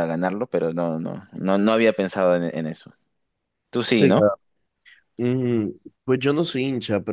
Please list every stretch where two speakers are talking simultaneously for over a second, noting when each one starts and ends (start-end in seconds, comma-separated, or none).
none